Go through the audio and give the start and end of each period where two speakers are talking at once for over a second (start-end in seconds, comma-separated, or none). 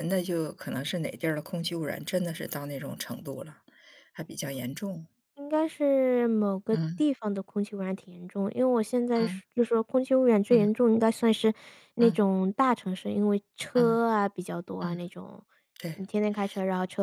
none